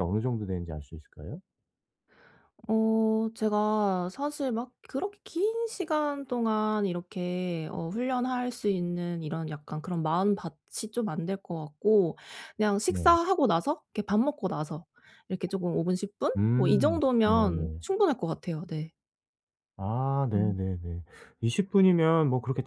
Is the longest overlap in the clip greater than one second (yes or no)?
yes